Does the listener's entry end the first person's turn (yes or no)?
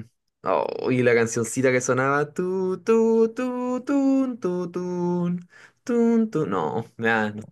yes